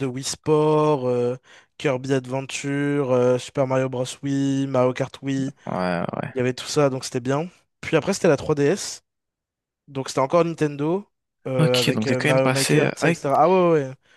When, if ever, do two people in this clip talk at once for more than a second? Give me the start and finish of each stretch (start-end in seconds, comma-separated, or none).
11.6-13.2